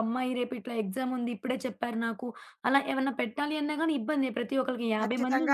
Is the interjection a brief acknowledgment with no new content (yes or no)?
no